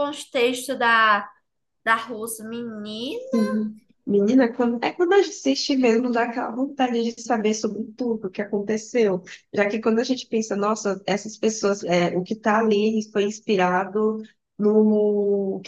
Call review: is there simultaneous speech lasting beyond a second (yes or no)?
no